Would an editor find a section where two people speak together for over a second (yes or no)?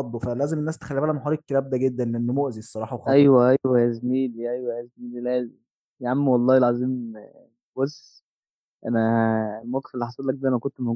no